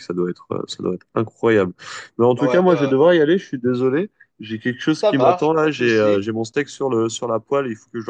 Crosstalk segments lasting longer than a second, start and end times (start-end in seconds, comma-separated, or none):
4.9-6.2